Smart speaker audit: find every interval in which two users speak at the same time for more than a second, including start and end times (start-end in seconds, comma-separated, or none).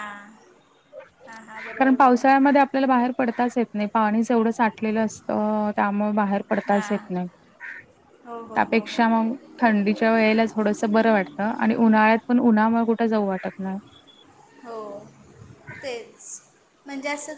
none